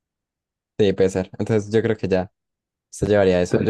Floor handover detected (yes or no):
no